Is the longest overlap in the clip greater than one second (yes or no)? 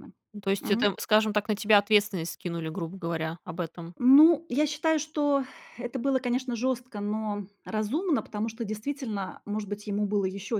no